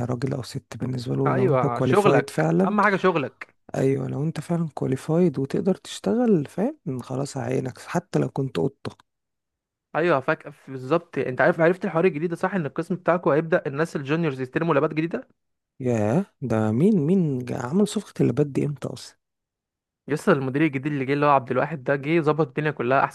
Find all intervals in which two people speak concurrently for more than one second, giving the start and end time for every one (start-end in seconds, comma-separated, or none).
1.2-2.8